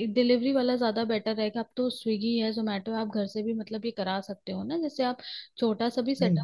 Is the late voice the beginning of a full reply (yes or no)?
no